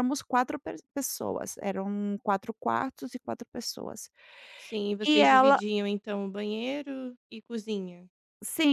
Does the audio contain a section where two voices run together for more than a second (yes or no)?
no